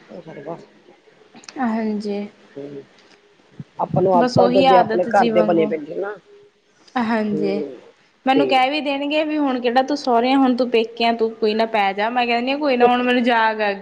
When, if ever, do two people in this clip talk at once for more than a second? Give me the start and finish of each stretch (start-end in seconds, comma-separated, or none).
4.2-5.7